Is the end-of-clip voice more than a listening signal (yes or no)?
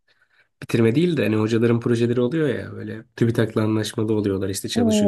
yes